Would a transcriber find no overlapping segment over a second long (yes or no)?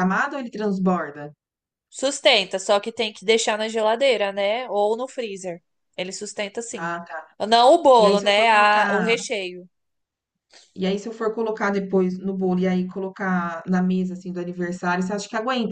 no